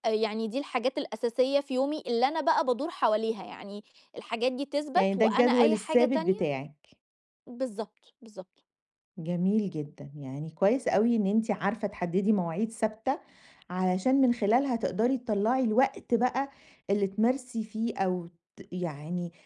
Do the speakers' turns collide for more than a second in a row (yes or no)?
yes